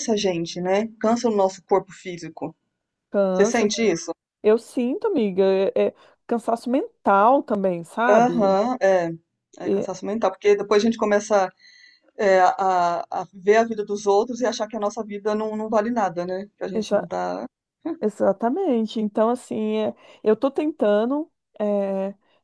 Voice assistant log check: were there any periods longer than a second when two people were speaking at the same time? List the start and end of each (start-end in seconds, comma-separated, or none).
none